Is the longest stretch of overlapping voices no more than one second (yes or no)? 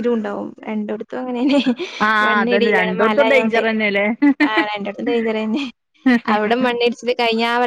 no